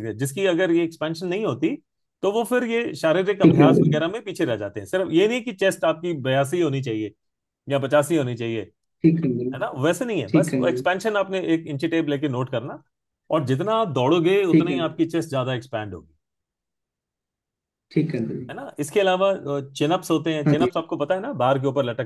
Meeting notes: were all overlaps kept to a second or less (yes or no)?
yes